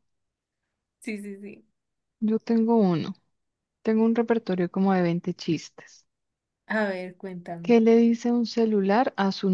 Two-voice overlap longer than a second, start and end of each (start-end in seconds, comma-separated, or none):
none